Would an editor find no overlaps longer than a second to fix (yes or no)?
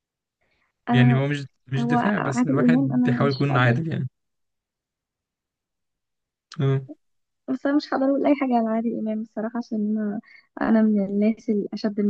no